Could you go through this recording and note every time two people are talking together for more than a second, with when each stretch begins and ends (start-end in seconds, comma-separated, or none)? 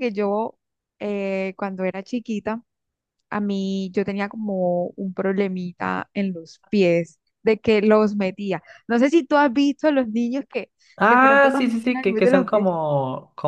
11.1-12.7